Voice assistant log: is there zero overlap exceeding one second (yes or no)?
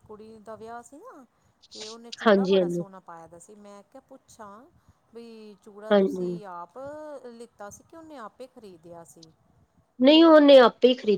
yes